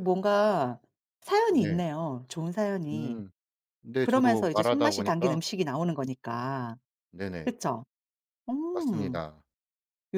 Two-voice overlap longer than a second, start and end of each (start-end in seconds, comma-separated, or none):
4.0-5.4